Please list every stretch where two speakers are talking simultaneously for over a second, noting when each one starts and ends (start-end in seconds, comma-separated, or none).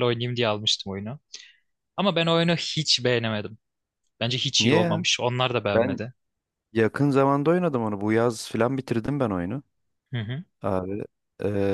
none